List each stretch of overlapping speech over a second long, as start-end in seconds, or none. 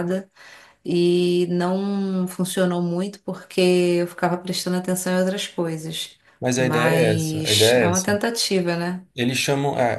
6.6-8.1